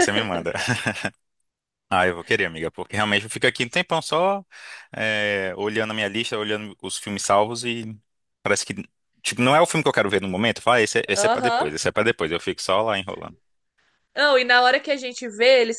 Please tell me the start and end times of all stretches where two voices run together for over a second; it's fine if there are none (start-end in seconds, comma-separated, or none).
none